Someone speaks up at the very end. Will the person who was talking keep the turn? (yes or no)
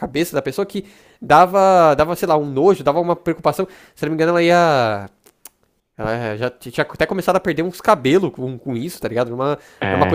yes